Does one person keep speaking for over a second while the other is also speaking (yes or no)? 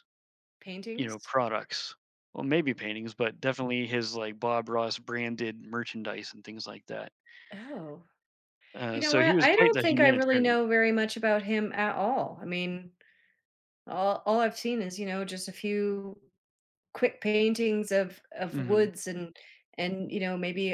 yes